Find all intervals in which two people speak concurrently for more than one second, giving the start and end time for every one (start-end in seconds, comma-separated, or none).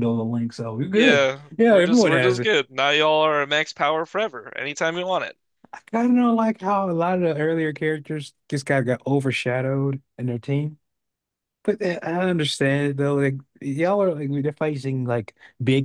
0.9-2.5